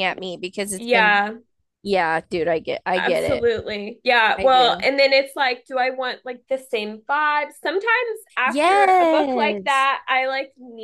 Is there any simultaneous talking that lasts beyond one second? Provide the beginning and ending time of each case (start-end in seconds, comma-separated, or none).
8.4-9.9